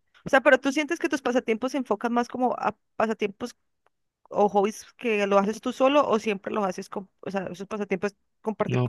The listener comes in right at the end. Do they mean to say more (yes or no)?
yes